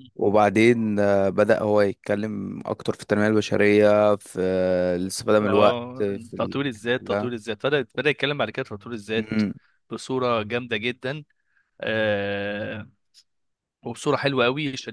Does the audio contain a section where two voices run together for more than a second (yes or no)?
yes